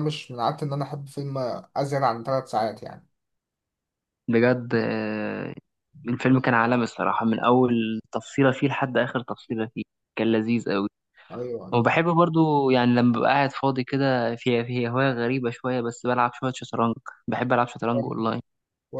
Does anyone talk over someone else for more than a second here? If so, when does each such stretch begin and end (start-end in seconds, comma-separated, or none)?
none